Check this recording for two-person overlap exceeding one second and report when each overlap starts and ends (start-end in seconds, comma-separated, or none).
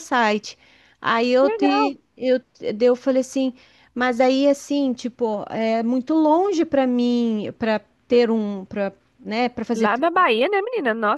none